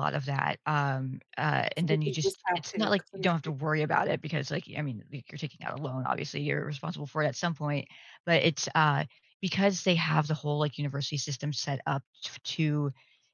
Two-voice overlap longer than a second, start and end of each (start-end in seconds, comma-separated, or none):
1.8-3.6